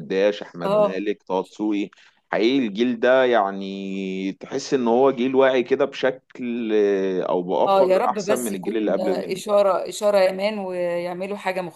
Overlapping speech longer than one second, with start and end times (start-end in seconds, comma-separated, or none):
7.7-9.4